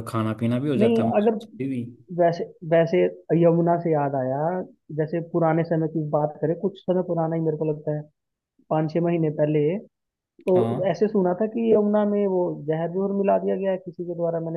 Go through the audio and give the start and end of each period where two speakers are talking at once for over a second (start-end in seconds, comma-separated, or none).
none